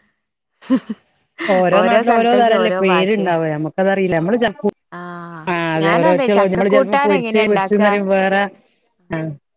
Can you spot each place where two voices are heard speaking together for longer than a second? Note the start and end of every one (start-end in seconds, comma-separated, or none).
5.8-7.9